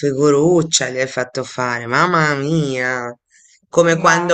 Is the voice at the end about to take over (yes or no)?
no